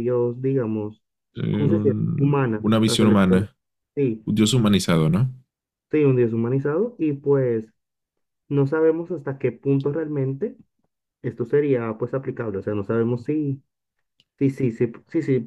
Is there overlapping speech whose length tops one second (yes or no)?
yes